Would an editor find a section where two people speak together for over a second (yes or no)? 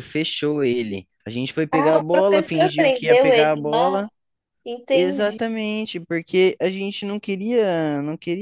yes